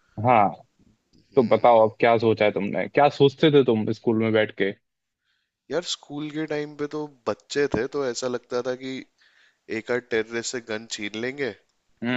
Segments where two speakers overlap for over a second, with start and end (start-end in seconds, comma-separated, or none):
none